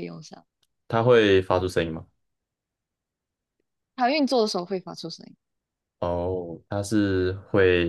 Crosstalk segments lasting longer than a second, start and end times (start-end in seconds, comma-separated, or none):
none